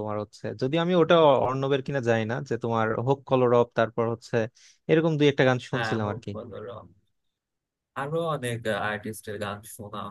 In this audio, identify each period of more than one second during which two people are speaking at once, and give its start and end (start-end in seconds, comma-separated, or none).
none